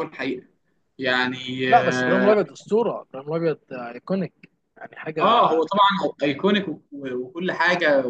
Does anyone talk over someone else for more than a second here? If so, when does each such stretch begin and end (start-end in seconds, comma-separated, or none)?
none